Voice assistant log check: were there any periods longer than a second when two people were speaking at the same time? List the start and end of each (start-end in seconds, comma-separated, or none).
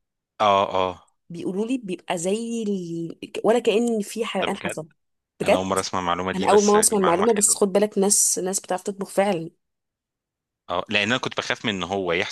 6.3-7.6